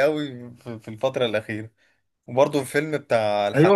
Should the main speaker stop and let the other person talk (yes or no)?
yes